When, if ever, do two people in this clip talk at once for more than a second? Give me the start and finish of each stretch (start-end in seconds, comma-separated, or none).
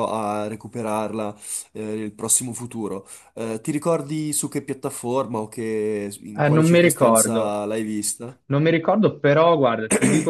6.3-7.6